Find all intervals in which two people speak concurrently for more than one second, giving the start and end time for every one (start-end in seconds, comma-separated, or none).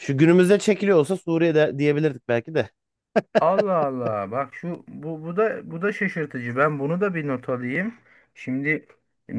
none